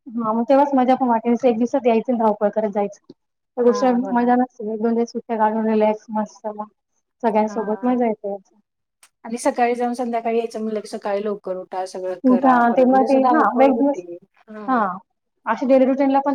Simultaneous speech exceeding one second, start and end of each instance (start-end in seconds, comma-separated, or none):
12.3-14.0